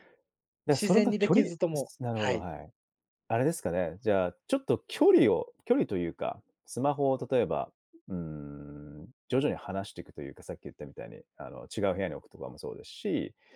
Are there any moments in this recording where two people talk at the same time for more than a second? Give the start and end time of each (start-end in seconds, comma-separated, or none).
0.7-2.5